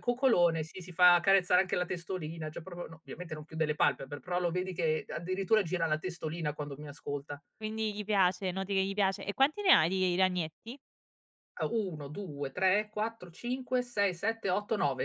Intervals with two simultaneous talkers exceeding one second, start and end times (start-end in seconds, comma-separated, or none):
none